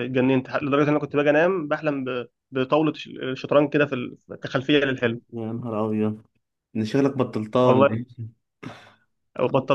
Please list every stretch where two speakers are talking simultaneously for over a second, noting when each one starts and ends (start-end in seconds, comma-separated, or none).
none